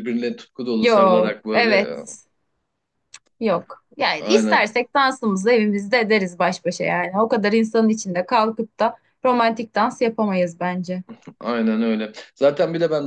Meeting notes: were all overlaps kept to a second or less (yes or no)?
no